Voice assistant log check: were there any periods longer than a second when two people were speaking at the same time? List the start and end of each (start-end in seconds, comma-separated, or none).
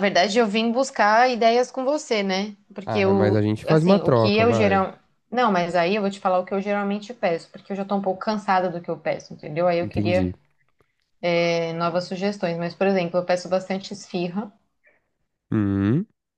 2.9-4.8